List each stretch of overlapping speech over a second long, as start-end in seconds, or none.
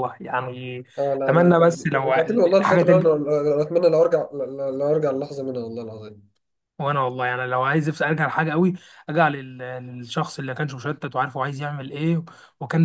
1.3-3.1